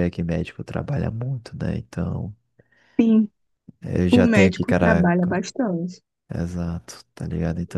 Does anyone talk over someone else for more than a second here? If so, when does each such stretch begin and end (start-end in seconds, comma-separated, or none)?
4.1-5.4